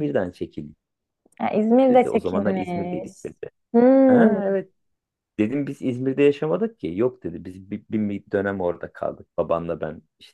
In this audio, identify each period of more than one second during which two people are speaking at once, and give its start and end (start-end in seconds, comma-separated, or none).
1.9-3.1